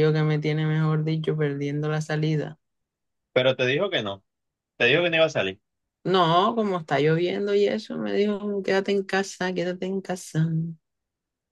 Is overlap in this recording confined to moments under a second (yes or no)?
yes